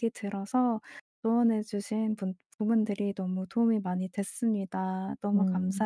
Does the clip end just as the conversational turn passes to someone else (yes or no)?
yes